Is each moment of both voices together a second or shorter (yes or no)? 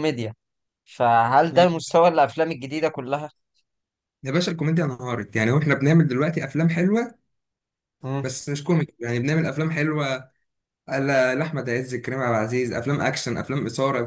yes